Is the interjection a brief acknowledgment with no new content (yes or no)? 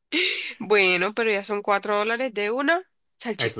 no